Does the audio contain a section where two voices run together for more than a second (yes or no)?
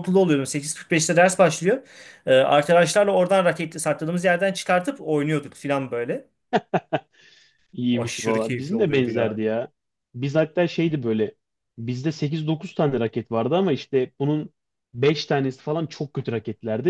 yes